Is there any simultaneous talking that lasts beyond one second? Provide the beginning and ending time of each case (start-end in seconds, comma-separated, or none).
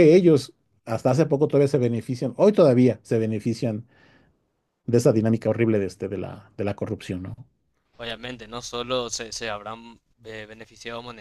none